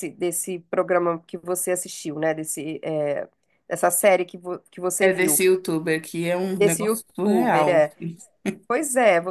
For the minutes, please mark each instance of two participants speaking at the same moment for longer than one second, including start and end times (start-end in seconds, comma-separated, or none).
6.5-7.9